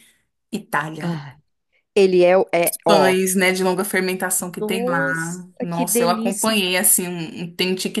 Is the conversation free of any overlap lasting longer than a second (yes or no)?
no